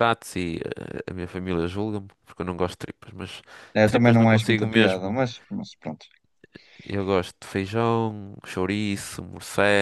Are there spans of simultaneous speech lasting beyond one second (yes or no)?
yes